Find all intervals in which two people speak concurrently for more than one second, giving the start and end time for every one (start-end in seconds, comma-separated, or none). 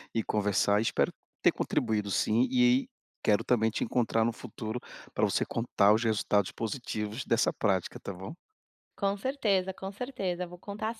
none